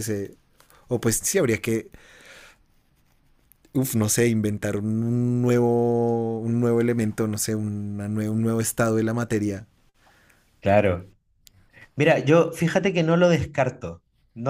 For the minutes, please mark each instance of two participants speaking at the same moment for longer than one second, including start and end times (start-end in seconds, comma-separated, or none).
none